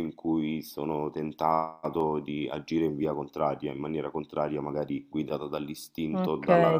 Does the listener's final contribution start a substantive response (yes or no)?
yes